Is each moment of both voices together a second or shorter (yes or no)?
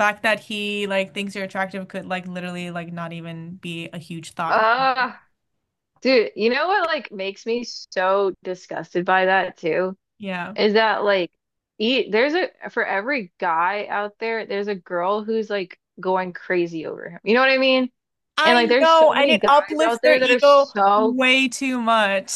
no